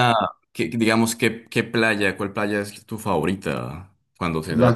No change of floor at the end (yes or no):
no